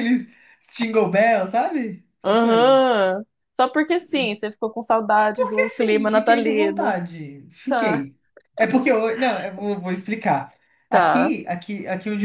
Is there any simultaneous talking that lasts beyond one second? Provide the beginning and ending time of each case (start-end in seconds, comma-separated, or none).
5.3-7.0